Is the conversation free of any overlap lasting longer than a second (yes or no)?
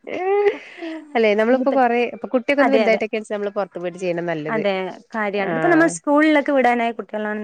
yes